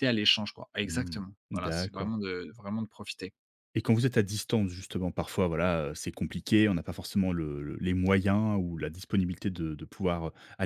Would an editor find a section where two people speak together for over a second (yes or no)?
yes